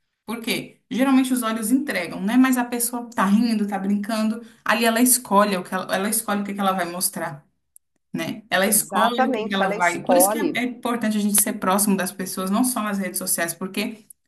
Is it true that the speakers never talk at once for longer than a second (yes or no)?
no